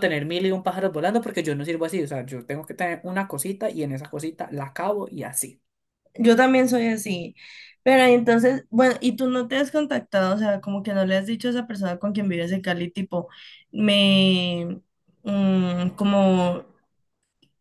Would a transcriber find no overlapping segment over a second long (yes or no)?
yes